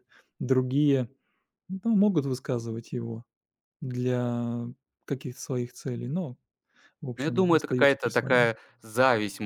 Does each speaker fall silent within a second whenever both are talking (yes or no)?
no